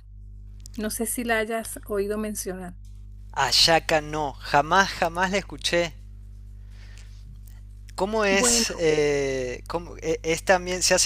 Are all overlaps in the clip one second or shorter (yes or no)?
yes